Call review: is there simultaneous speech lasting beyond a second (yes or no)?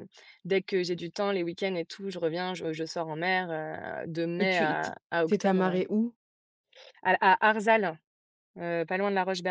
yes